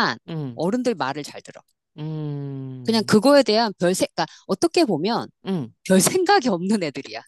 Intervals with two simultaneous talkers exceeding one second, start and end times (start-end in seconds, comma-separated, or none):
none